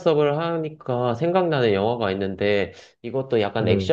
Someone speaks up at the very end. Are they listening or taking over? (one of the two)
listening